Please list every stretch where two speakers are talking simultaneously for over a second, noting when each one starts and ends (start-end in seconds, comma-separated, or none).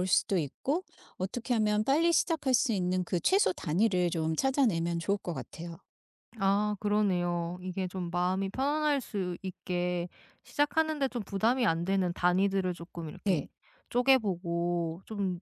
none